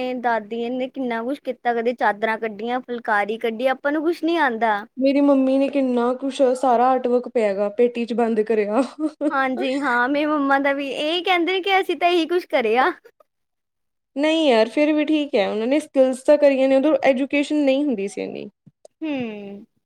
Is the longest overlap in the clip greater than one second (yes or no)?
no